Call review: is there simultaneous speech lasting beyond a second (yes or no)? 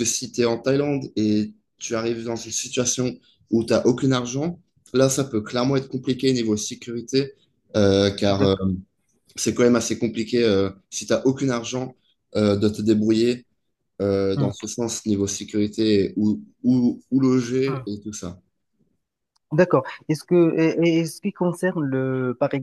no